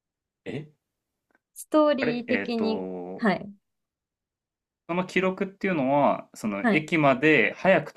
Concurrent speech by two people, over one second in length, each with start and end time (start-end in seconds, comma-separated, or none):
2.0-3.3